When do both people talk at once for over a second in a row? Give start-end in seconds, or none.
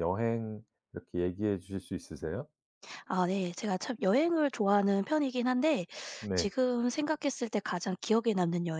none